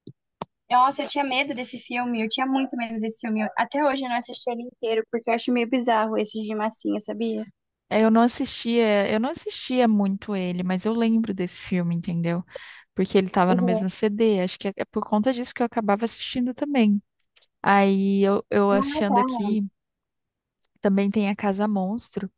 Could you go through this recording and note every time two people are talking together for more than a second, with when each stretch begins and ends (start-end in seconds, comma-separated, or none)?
none